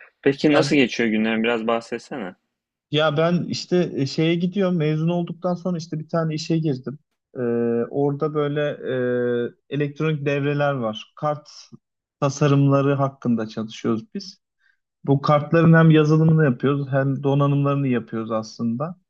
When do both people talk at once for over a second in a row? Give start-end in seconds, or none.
none